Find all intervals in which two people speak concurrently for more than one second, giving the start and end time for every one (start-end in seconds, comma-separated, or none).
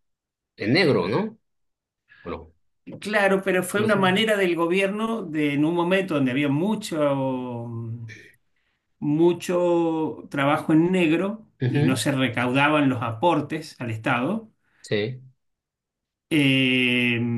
none